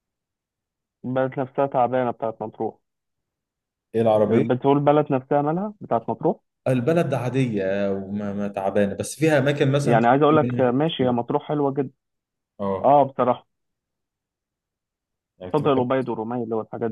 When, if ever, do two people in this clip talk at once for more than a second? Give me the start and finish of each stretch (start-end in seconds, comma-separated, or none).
9.8-11.2